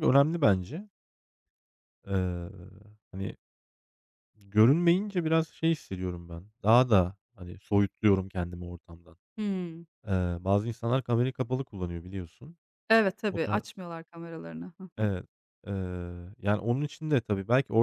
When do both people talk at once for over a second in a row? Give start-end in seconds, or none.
none